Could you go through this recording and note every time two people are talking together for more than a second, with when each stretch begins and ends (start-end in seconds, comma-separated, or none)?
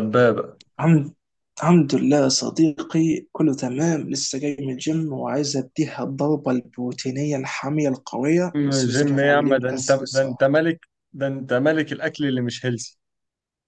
8.5-10.5